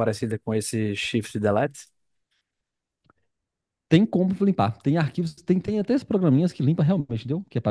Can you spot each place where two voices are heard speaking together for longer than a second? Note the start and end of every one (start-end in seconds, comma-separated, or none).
none